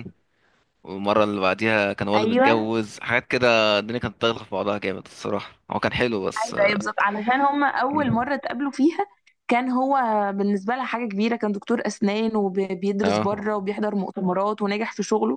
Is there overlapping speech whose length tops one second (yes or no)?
no